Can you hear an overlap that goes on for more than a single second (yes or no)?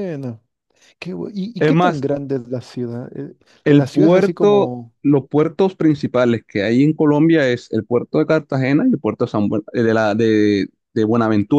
yes